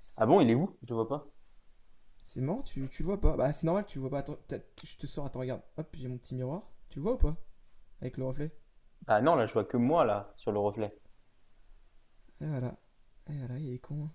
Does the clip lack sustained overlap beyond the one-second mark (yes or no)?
yes